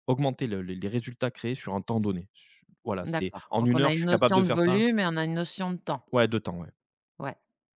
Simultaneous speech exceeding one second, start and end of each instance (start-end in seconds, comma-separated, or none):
3.0-4.8